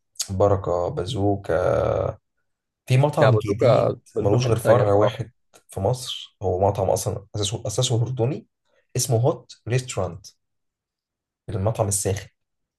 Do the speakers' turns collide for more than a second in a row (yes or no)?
yes